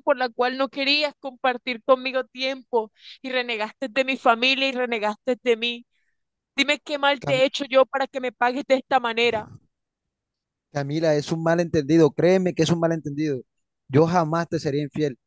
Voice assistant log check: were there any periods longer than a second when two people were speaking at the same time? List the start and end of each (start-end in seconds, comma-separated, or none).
none